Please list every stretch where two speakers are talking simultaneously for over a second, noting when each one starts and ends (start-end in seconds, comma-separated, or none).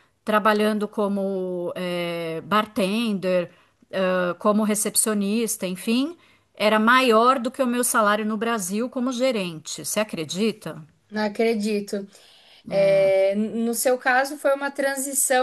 none